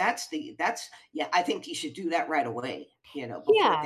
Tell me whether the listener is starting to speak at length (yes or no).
yes